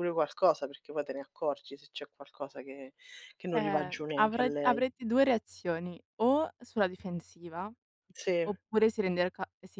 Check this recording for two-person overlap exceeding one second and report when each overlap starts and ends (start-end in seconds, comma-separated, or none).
3.5-4.8